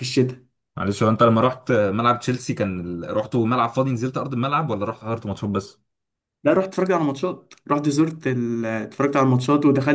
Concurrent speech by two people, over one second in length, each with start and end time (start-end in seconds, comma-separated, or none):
none